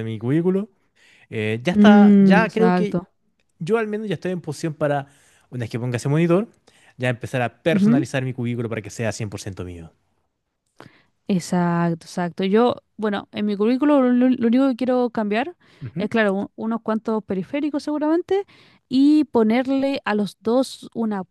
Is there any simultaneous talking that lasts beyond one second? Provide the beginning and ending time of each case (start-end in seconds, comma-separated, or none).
1.7-3.0